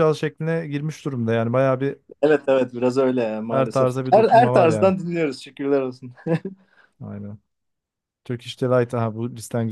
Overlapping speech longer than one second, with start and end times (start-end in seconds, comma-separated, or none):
3.5-4.9